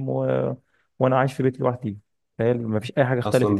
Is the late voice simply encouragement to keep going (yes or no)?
no